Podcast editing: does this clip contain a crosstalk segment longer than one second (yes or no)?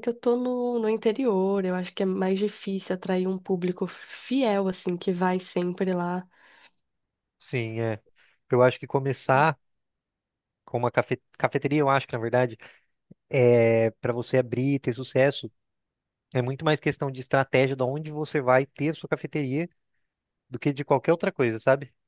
no